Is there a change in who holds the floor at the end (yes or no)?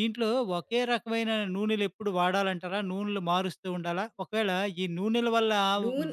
no